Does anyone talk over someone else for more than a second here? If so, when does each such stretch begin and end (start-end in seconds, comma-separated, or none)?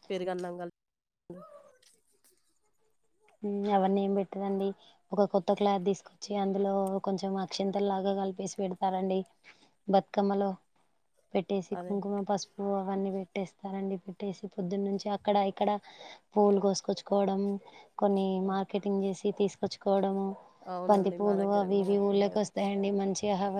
20.9-22.8